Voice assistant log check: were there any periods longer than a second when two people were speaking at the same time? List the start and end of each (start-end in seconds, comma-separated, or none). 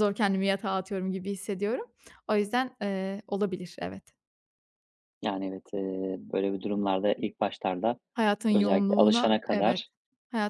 8.5-9.8